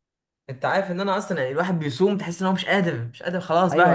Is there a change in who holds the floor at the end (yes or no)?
yes